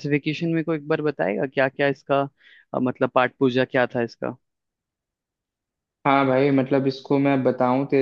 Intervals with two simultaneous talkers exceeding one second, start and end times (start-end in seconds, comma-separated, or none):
none